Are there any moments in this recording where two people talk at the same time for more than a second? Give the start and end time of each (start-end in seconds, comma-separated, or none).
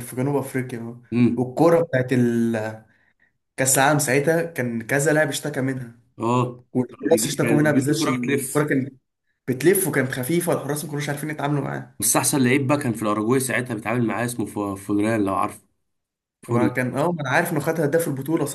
6.7-8.7